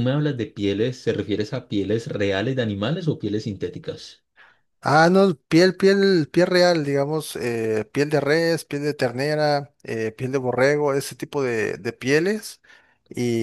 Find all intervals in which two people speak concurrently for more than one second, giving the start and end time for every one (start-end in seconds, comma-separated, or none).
none